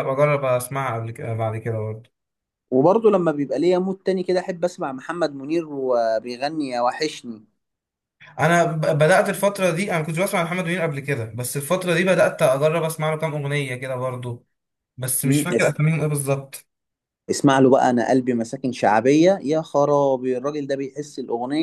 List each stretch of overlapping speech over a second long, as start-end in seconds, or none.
none